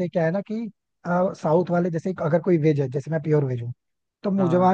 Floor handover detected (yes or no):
no